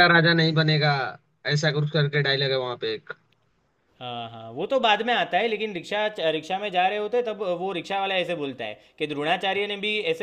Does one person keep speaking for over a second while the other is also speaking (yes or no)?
no